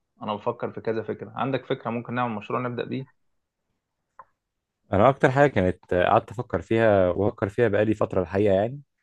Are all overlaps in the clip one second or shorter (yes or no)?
yes